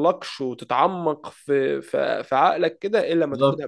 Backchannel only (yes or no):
no